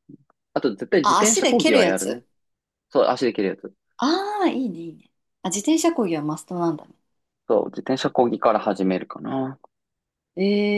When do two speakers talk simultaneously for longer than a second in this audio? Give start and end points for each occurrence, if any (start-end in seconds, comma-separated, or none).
1.0-2.2